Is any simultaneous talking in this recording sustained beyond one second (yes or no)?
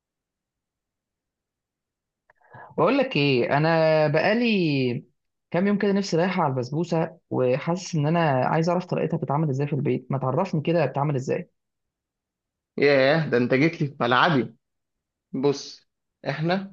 no